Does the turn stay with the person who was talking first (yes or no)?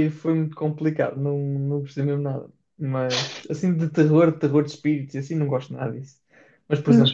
yes